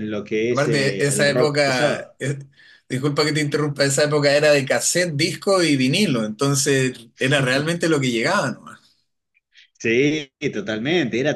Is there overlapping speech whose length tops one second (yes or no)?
yes